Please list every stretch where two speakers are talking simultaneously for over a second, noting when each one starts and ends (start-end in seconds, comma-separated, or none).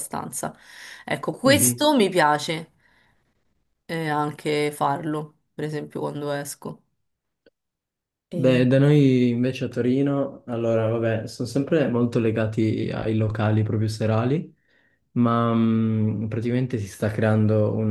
none